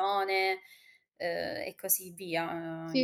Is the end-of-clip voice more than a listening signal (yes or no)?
yes